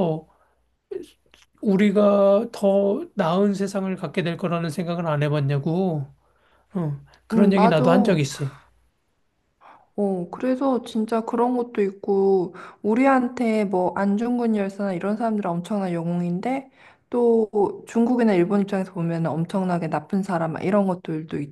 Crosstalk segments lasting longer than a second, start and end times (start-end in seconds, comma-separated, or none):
none